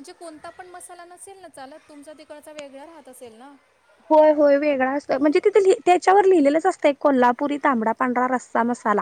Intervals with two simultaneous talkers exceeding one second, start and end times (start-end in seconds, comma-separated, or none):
none